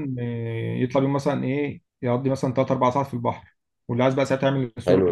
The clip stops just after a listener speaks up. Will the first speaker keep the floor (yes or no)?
no